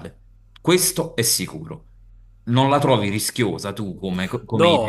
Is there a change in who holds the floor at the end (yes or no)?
yes